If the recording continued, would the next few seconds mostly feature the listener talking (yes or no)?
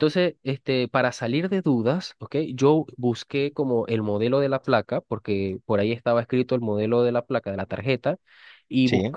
no